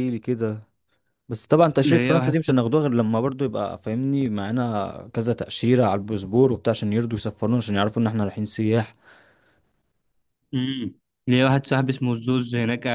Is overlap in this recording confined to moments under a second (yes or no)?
yes